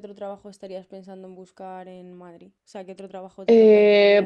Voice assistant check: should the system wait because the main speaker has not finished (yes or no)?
no